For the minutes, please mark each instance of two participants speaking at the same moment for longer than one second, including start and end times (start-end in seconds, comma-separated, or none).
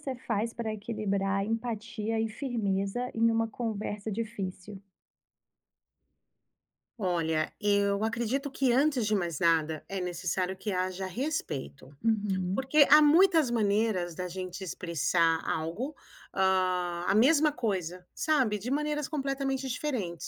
none